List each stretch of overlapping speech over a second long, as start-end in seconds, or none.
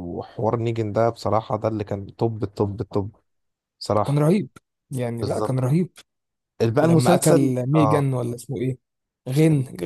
6.8-8.1